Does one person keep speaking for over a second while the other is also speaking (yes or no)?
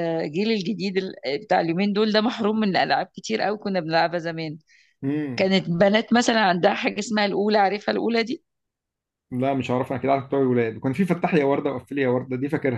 no